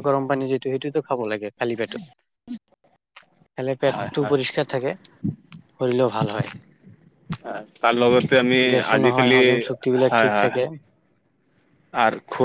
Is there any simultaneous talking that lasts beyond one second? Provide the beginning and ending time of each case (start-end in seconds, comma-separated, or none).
9.0-10.6